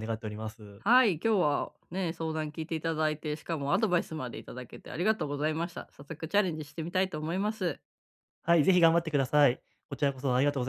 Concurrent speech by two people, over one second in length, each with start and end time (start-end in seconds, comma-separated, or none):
none